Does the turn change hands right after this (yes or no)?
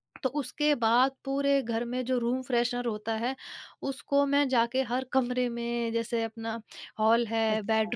no